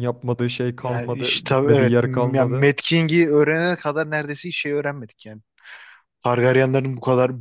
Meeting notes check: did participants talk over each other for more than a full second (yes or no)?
yes